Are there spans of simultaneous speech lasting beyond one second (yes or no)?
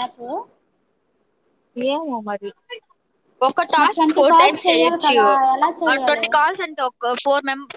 yes